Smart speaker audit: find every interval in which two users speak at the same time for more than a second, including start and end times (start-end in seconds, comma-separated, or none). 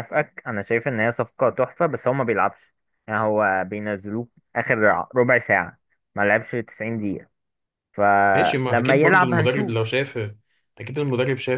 8.3-9.8